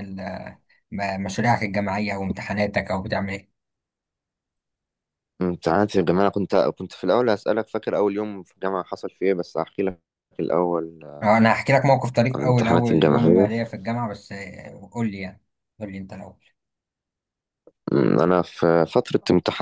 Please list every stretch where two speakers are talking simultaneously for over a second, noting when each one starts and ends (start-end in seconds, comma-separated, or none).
12.3-13.6